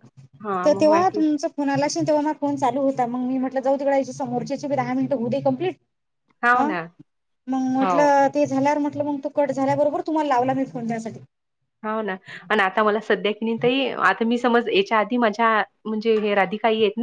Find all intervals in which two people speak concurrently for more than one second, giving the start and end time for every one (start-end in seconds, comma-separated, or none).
none